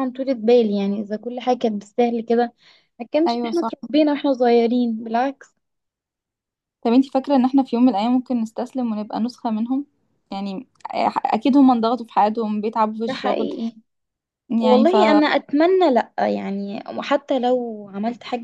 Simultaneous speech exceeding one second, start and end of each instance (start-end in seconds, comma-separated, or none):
none